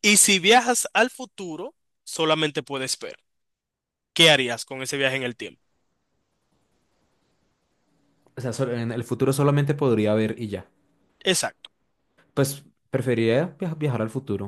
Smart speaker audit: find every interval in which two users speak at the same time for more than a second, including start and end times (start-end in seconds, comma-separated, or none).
none